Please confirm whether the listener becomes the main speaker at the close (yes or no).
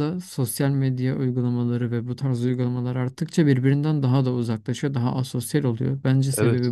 yes